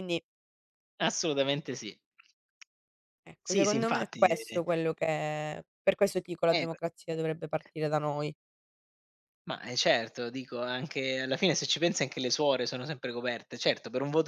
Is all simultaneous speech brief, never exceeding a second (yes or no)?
no